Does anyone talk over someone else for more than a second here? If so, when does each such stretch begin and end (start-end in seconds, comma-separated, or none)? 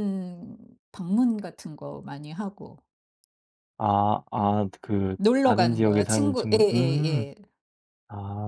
5.2-7.3